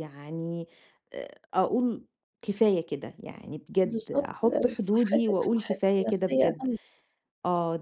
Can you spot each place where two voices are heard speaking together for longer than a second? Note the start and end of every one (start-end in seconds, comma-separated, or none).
3.8-6.7